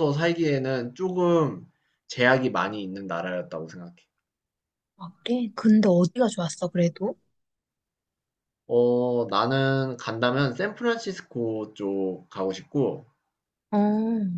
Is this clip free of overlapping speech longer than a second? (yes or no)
yes